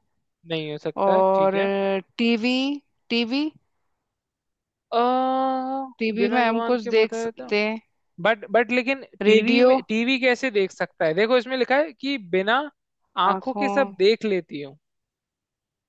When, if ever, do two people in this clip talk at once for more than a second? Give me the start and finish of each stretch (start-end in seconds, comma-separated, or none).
6.2-7.5